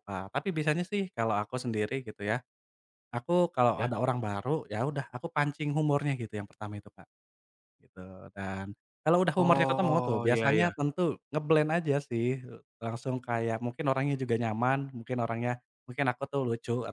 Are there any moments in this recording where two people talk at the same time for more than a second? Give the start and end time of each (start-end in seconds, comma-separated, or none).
9.4-10.7